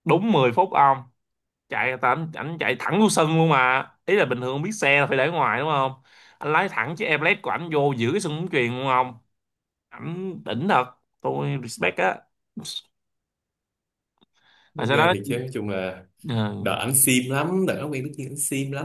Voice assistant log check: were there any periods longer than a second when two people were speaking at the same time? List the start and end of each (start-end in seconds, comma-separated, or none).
none